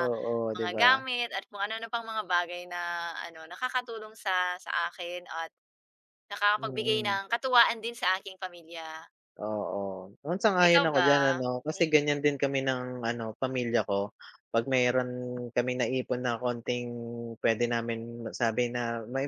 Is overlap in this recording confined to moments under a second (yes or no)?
yes